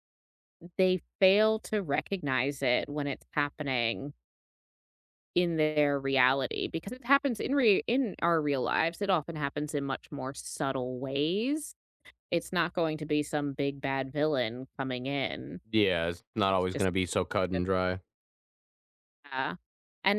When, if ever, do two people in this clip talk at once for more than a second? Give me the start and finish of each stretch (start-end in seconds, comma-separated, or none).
none